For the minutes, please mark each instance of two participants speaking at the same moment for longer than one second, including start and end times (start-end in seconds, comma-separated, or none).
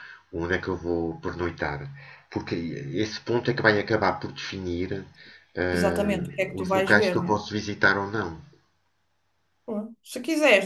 5.7-7.6